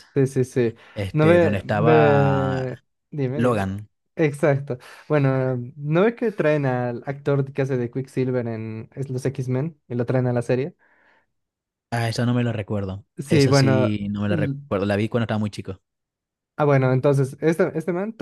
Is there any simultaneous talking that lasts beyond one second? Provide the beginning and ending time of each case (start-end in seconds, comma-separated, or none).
1.1-2.6